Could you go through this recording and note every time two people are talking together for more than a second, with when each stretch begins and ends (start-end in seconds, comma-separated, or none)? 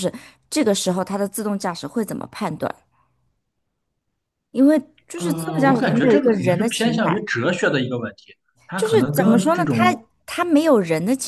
5.2-7.2, 8.8-10.1